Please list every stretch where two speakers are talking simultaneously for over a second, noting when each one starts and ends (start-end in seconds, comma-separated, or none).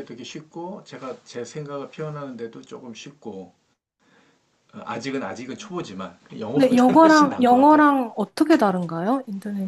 6.5-7.8